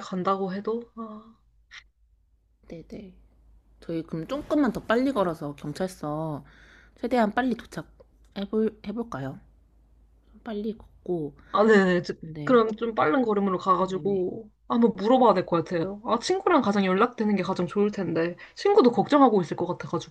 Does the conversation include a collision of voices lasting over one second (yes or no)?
no